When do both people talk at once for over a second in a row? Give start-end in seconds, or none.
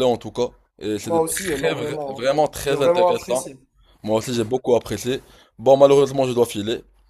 1.0-3.4